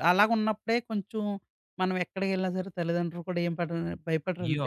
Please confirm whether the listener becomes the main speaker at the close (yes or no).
yes